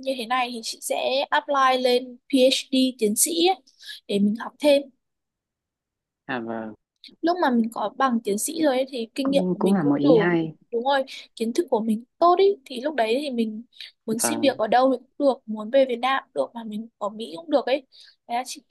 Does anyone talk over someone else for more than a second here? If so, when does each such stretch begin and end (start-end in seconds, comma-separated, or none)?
9.2-10.5